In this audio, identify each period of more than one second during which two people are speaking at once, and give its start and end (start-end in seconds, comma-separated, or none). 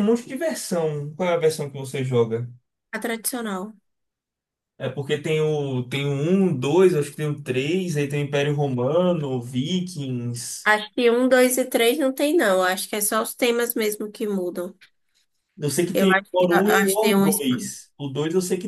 15.9-17.4